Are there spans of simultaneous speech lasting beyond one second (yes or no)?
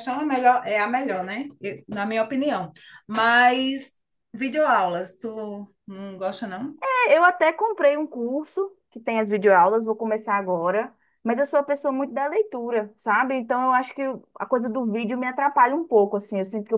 no